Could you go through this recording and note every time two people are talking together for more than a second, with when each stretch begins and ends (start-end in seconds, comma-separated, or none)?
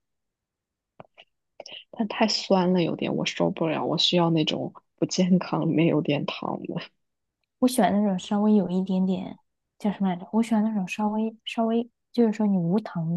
none